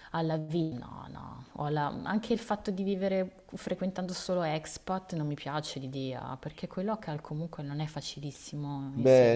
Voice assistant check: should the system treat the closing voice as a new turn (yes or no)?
yes